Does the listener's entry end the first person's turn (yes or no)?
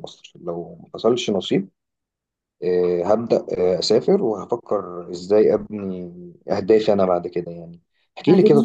no